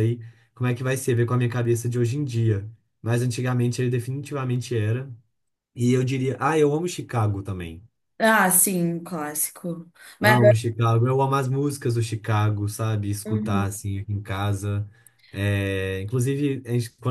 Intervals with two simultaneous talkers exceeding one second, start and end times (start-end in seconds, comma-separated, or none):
none